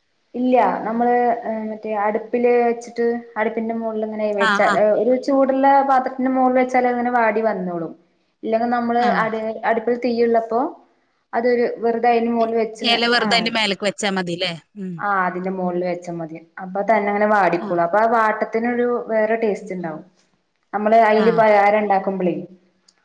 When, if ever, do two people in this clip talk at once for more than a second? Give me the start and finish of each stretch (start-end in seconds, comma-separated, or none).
none